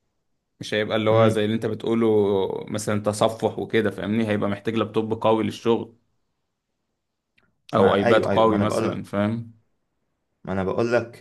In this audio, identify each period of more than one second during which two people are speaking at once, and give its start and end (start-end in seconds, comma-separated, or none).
7.8-9.1